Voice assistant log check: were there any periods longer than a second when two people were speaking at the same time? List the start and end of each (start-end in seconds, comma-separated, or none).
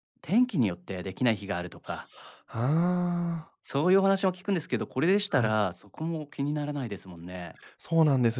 none